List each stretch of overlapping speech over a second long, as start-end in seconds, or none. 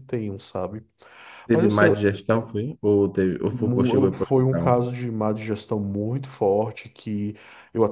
3.5-4.9